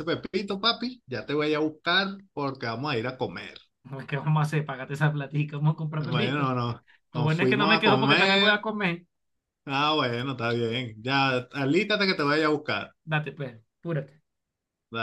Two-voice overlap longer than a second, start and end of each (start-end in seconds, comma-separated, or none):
7.1-8.7